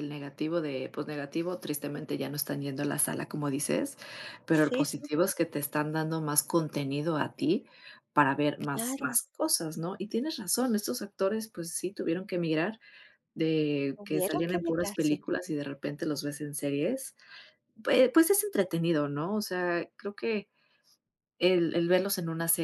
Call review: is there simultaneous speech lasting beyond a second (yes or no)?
yes